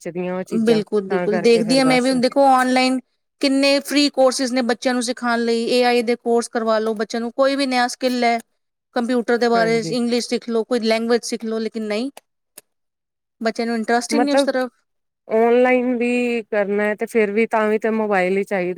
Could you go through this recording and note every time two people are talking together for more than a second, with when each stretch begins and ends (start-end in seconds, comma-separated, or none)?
0.6-2.1